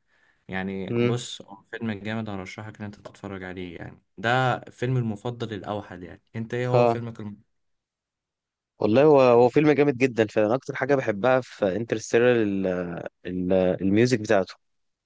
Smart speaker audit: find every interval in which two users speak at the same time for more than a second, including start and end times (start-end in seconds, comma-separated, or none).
none